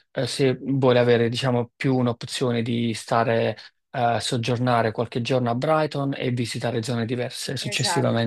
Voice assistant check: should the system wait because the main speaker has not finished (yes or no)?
no